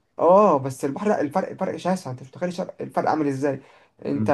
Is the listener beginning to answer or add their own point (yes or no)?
no